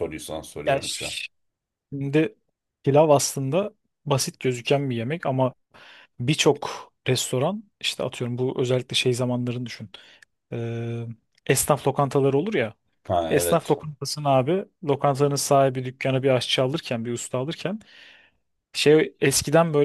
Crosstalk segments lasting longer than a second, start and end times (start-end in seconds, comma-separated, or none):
none